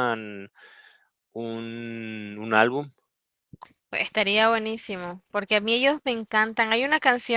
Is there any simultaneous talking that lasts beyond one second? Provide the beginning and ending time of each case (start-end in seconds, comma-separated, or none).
none